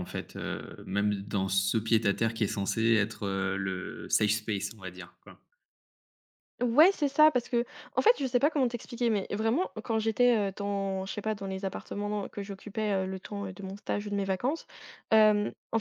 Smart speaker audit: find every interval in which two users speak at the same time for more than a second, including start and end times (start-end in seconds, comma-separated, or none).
none